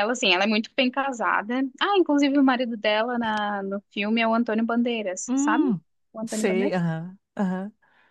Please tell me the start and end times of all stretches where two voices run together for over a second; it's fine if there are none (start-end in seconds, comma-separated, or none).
none